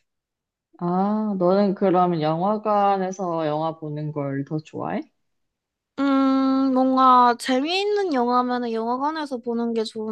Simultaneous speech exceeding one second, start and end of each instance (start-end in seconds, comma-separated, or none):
none